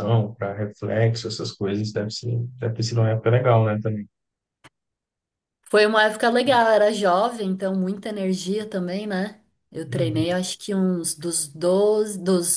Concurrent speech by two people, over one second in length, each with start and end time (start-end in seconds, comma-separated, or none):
none